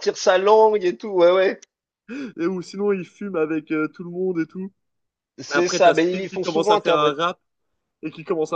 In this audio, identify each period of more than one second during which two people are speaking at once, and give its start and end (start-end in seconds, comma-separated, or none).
5.5-7.2